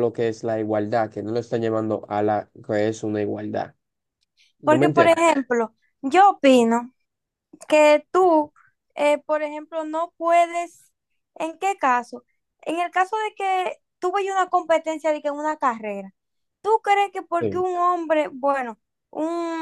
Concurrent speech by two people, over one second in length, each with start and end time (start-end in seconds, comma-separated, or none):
none